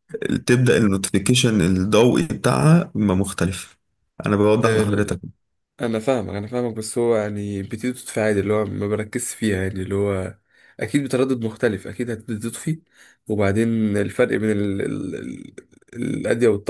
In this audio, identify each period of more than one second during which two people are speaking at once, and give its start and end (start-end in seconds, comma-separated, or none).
none